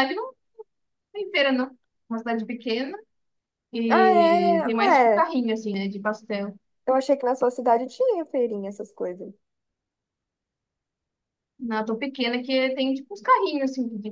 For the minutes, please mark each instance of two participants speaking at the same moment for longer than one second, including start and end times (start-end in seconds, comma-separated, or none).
3.9-5.3